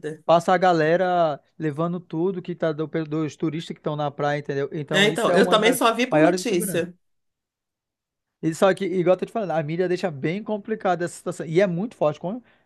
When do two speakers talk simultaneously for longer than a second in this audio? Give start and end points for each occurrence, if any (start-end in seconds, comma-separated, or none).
4.9-6.9